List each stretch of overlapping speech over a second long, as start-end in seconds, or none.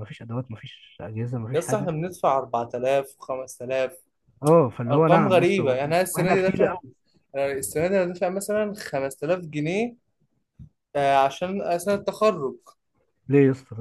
4.9-6.8